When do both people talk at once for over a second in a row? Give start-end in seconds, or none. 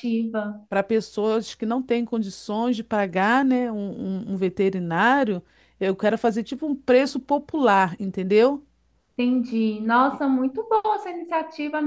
none